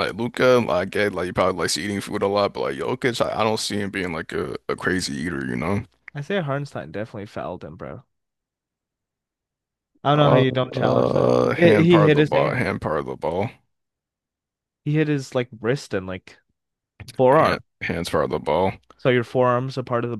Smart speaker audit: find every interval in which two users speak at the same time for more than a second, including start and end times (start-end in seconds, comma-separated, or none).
10.2-12.7